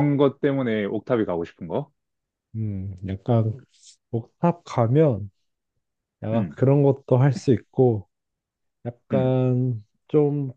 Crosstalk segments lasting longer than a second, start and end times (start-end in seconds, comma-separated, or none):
none